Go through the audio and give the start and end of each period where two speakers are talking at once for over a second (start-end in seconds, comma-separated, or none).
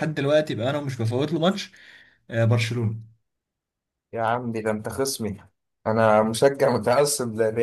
none